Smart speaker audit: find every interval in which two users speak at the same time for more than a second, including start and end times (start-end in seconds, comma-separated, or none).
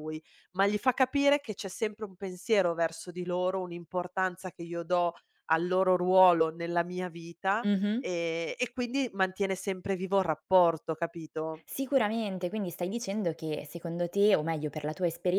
none